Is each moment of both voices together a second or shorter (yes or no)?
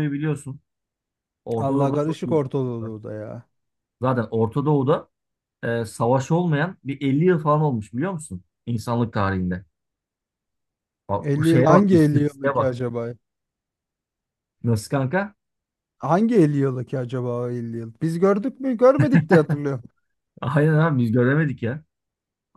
no